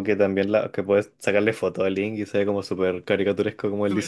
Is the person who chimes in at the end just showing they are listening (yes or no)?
no